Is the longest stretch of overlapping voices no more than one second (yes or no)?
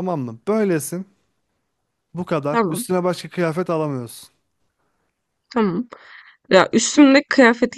yes